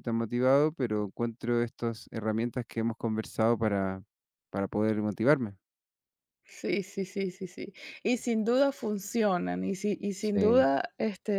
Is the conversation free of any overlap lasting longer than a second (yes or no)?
yes